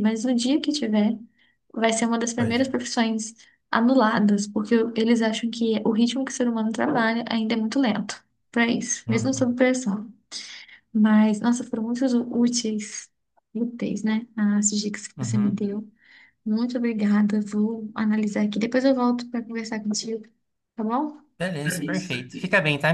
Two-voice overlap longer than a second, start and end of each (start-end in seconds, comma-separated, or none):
none